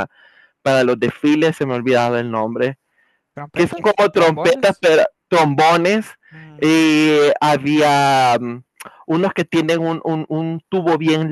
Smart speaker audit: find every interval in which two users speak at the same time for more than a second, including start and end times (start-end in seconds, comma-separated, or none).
3.5-4.8